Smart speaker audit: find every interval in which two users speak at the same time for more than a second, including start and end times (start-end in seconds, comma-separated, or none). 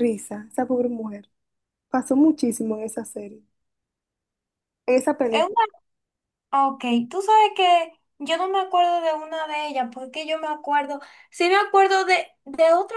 none